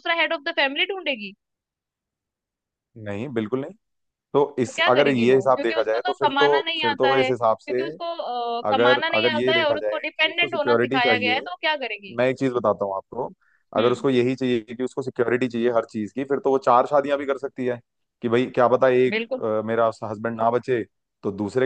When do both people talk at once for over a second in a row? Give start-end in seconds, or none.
4.7-7.8, 8.7-11.4